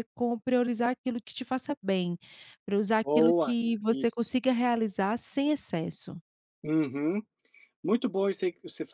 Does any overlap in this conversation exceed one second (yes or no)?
yes